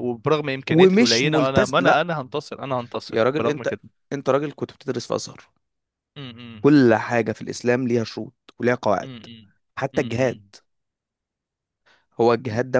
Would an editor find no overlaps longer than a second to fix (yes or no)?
no